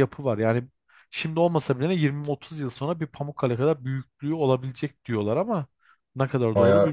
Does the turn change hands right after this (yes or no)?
yes